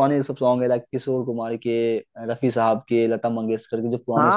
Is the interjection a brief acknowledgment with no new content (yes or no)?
no